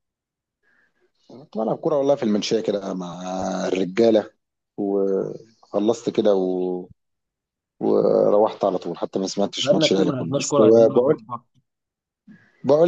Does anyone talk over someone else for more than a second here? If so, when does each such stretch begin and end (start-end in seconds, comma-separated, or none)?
9.6-11.2